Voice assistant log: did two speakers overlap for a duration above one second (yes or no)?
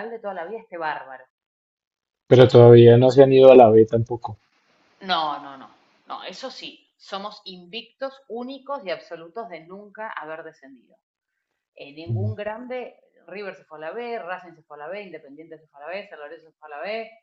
no